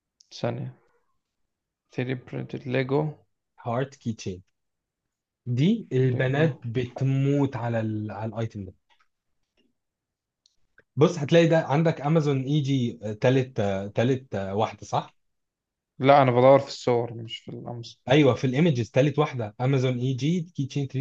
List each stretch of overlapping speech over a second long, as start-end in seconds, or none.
none